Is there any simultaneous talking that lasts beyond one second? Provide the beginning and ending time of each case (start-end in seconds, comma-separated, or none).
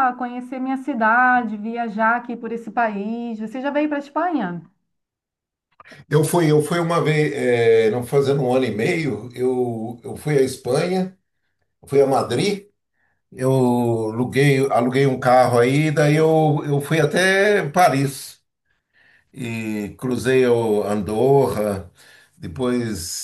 none